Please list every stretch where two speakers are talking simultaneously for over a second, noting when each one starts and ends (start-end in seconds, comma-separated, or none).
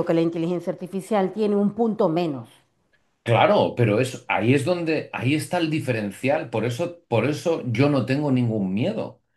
none